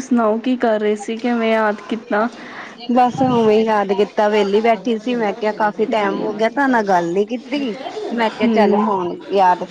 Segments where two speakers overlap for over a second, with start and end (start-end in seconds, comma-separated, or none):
none